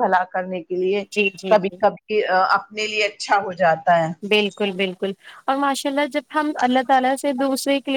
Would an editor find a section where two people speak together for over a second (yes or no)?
no